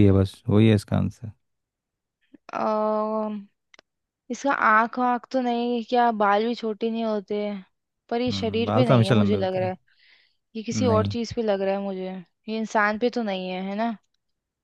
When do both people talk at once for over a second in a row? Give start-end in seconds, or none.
8.3-9.7